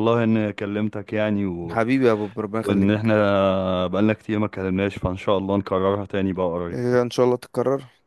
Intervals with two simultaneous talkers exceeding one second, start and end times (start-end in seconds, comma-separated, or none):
none